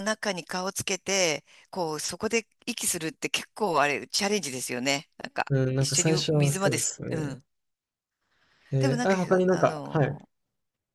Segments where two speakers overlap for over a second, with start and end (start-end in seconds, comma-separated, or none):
5.5-7.4, 8.8-10.2